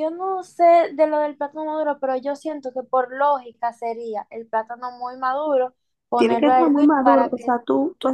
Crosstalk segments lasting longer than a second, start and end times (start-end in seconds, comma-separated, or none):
6.1-7.6